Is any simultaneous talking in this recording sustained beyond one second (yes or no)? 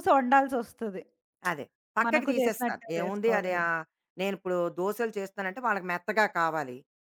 yes